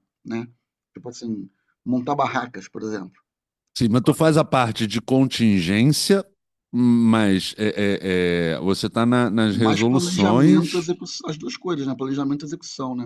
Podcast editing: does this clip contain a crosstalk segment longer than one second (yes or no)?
yes